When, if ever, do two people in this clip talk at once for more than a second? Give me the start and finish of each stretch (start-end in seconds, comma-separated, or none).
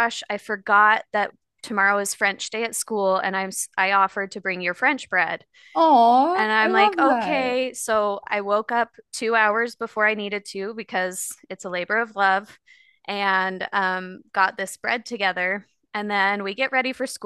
6.3-7.6